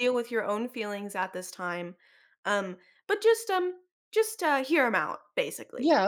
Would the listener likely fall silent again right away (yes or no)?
no